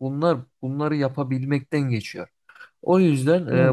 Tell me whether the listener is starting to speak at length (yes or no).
no